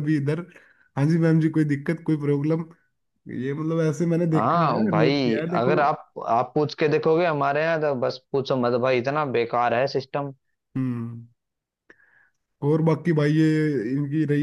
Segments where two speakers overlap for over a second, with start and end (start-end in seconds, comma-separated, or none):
4.3-5.8